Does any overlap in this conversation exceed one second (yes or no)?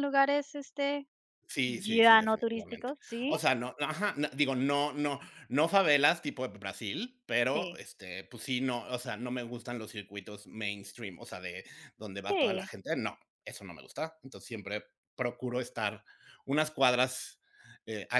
yes